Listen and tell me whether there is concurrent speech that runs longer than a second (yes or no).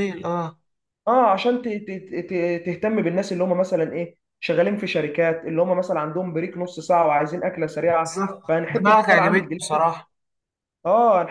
yes